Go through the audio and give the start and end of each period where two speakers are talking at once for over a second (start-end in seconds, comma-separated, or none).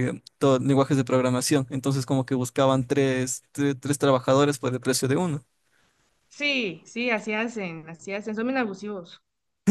none